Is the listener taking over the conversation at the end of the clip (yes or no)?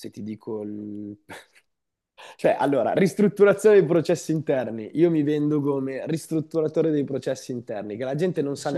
no